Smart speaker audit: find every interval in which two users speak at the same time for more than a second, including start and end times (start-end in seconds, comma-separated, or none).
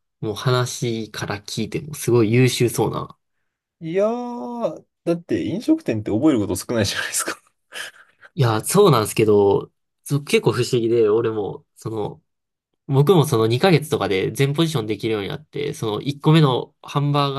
none